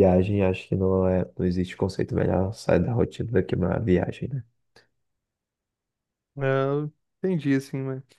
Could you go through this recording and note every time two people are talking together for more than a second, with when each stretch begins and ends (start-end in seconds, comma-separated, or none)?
none